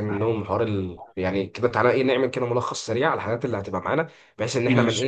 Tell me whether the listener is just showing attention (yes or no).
yes